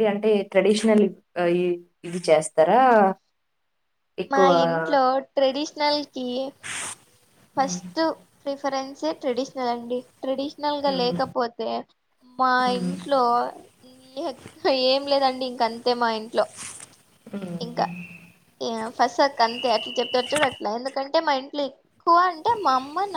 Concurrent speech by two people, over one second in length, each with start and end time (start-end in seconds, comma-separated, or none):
none